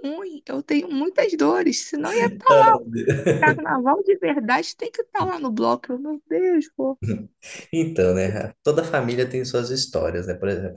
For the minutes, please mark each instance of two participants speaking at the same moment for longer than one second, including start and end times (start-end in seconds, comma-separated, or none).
none